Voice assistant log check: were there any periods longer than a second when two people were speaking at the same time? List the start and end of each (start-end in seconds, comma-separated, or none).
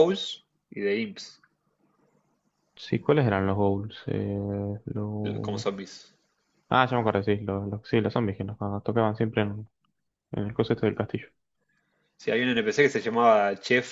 none